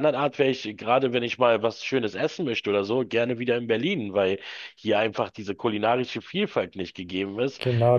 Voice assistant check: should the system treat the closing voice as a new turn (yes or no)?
yes